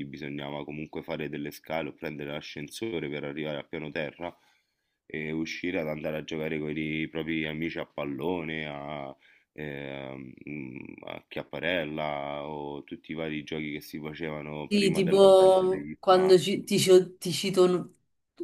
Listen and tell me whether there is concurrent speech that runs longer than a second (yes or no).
yes